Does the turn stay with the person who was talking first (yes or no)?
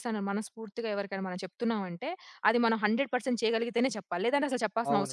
no